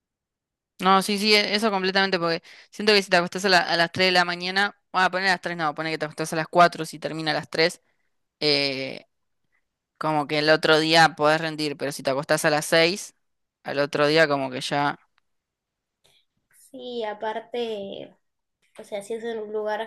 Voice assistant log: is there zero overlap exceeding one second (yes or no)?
yes